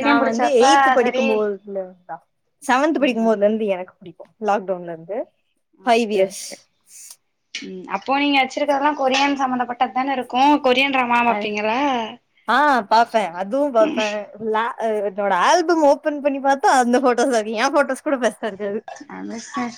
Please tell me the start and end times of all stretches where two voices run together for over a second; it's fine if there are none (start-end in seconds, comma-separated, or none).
none